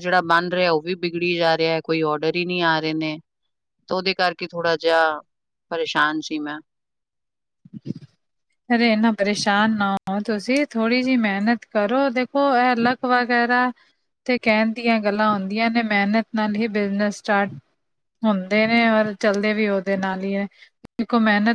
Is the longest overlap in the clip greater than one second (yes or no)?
no